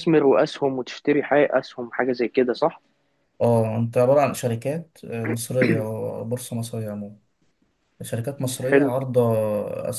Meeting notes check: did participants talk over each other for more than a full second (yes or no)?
no